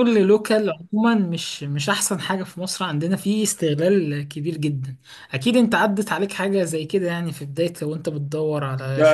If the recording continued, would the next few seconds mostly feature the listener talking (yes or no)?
yes